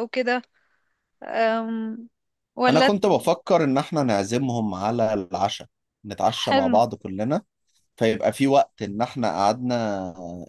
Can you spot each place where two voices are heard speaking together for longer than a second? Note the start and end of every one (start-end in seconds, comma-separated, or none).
none